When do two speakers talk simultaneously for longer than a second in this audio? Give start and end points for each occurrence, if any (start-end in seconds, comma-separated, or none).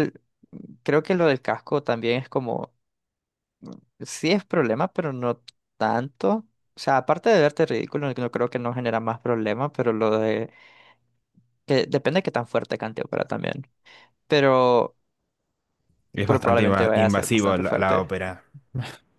16.2-18.1